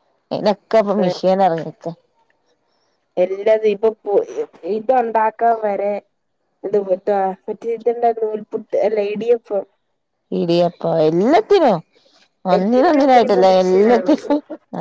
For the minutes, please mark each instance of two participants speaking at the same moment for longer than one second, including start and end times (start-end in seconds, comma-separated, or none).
12.6-14.1